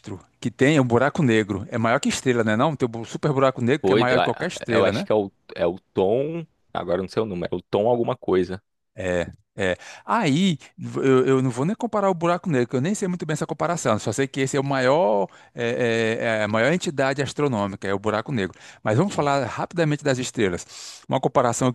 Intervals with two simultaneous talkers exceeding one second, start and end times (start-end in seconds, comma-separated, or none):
3.8-5.1